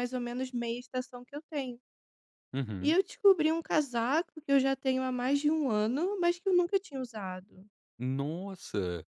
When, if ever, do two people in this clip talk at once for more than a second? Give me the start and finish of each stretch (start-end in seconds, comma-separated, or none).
none